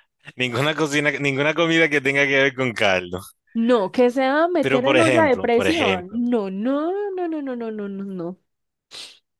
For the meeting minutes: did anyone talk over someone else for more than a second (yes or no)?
yes